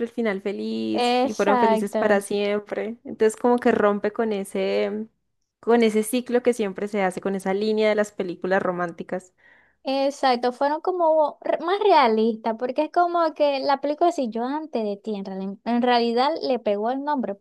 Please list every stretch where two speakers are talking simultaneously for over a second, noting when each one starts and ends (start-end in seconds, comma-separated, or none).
0.9-2.2